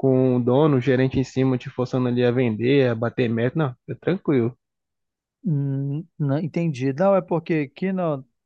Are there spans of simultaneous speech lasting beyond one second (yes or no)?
no